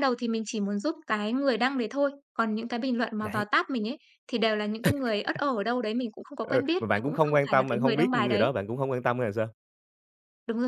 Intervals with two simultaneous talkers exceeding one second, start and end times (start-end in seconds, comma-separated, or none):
6.5-8.5